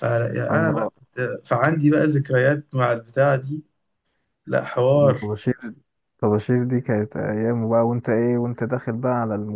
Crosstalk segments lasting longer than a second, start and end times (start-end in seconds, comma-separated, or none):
none